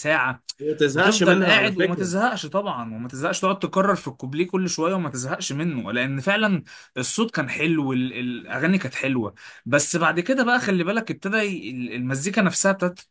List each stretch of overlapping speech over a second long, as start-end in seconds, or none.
0.9-2.1